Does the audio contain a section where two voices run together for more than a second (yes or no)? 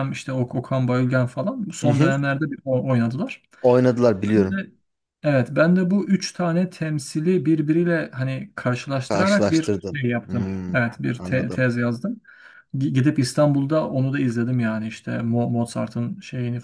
yes